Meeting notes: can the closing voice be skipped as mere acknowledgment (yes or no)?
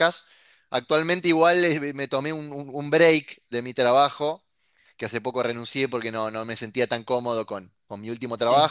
yes